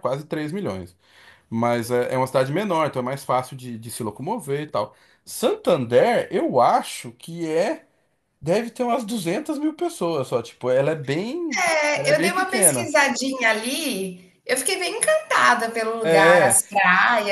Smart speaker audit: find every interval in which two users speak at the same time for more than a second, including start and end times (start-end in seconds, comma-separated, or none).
11.6-12.9